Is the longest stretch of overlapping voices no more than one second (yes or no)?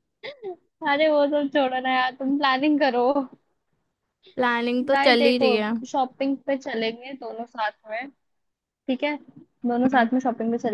yes